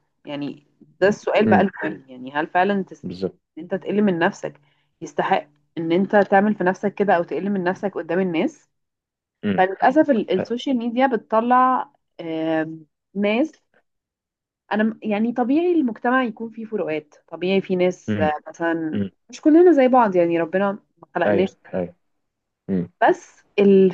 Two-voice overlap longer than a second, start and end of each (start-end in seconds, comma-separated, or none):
none